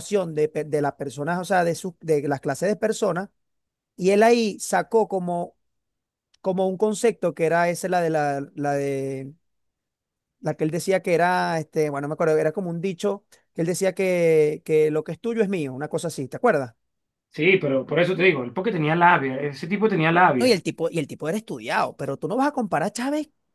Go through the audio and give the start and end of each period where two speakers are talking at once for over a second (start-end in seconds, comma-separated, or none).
none